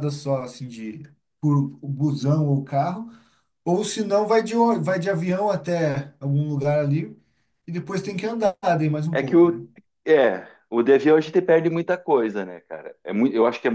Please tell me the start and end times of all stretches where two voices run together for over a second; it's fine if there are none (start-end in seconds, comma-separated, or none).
none